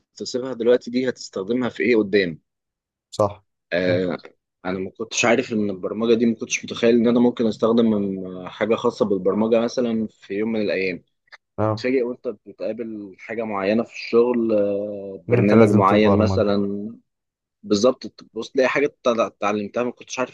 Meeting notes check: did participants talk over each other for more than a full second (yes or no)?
yes